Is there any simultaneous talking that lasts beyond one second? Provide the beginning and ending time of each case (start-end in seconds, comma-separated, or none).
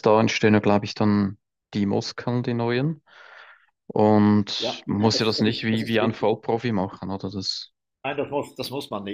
4.6-6.3